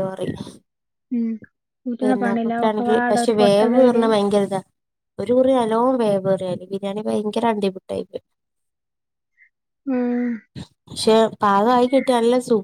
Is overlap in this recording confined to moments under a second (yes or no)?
no